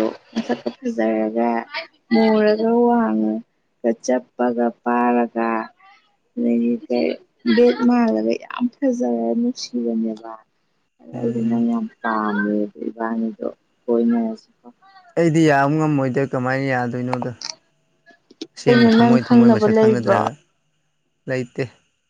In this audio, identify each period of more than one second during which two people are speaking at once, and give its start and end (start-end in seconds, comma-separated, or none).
18.6-20.2